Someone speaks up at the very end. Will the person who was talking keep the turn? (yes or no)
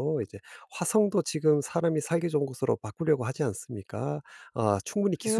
no